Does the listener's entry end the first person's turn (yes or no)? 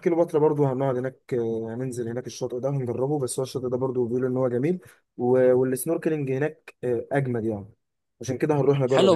yes